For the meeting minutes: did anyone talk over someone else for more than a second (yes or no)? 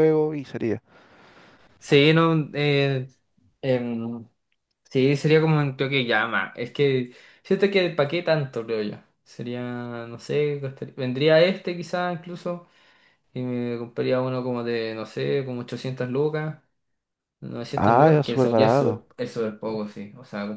yes